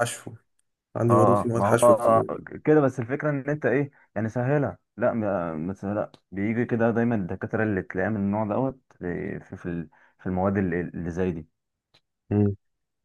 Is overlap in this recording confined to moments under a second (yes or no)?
no